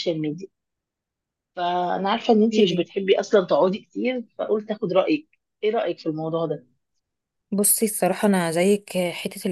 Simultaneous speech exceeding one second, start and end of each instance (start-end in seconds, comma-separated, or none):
none